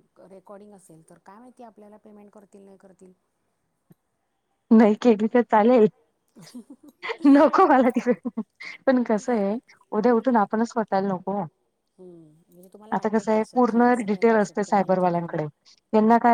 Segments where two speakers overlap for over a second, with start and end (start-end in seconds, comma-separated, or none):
12.9-15.4